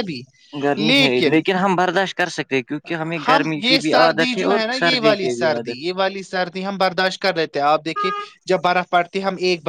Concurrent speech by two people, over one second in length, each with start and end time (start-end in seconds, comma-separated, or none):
3.3-5.8